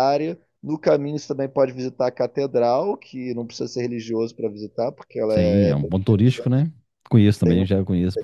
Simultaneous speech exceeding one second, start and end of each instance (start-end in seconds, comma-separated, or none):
5.3-6.6